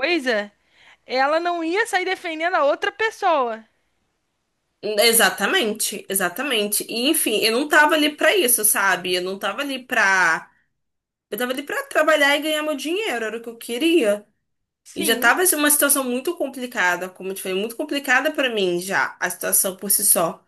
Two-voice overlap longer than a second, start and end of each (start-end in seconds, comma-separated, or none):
none